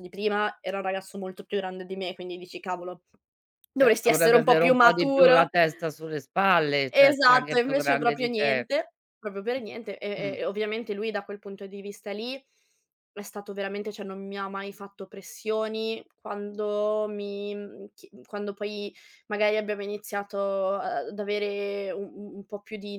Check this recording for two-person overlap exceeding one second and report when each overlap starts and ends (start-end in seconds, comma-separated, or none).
3.8-5.5, 6.9-8.7